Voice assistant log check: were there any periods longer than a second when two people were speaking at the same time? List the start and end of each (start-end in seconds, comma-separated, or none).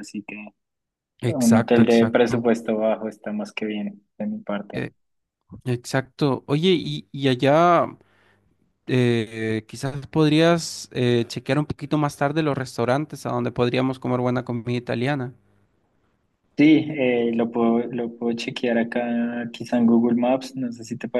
1.3-2.5